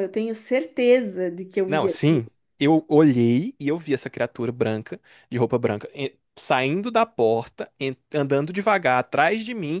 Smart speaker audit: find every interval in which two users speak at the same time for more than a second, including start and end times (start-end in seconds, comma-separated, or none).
none